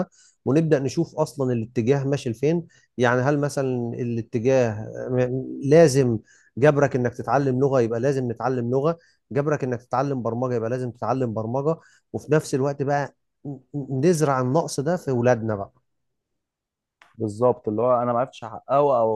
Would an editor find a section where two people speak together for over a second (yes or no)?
no